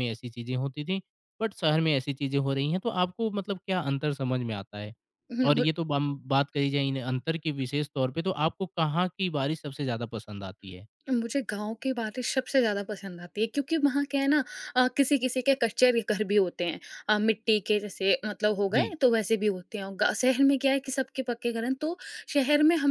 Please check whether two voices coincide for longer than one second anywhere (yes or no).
no